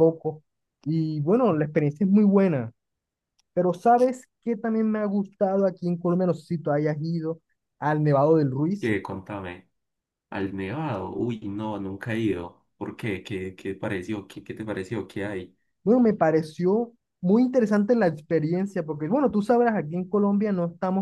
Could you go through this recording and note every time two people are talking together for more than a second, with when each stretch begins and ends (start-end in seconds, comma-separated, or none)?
none